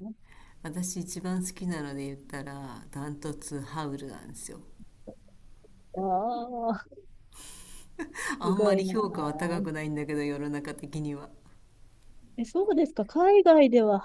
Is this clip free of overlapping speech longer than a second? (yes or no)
yes